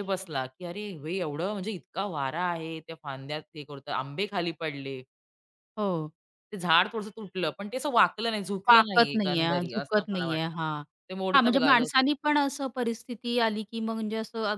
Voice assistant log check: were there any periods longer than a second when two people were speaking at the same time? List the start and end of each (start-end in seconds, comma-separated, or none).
8.7-10.6